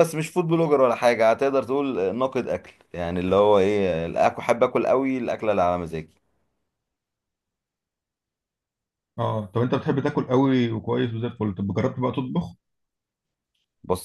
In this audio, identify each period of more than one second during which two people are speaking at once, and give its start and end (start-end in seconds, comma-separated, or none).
none